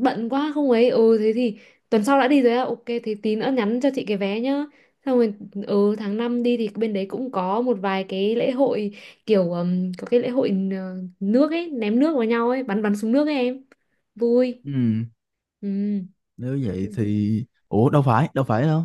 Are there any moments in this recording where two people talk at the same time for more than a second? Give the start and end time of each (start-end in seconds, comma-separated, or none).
none